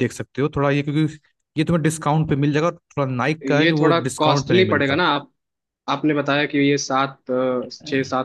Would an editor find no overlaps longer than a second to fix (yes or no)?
no